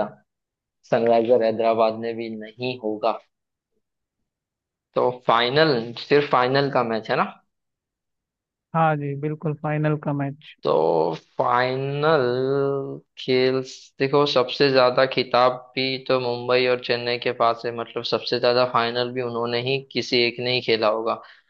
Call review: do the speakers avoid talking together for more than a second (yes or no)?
yes